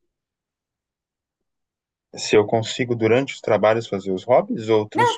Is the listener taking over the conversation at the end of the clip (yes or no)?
yes